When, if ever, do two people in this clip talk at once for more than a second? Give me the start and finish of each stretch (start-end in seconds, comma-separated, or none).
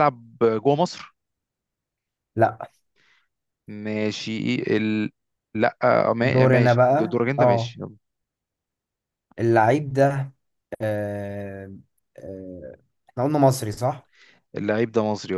6.2-7.7